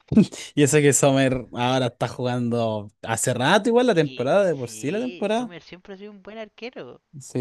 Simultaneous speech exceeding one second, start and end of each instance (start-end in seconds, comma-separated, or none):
3.9-5.5